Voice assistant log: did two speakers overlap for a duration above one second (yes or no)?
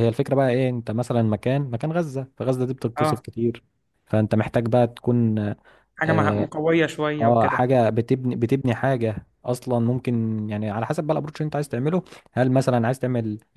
no